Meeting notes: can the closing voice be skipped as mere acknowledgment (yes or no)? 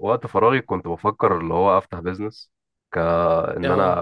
yes